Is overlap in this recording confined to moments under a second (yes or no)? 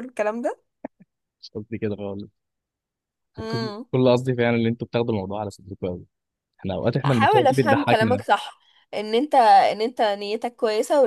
no